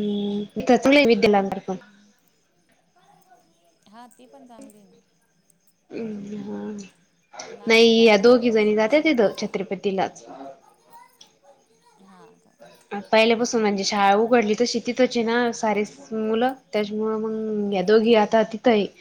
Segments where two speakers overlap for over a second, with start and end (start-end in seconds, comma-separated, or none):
7.7-9.1